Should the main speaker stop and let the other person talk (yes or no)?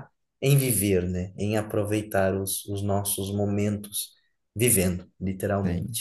yes